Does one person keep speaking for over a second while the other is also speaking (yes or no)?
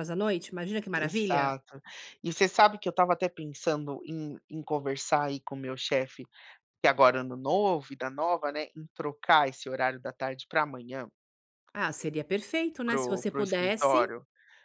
yes